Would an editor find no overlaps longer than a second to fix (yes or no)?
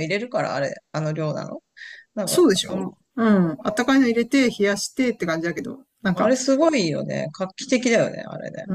yes